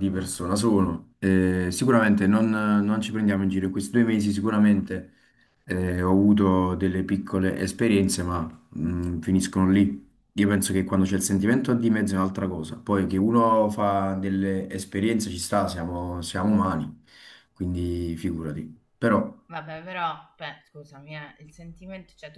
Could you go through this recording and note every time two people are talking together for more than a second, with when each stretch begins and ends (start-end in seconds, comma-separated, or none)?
none